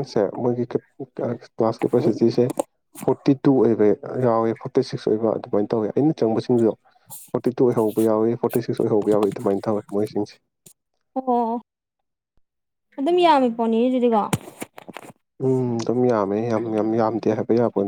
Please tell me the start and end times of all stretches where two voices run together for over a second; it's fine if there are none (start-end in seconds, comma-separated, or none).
none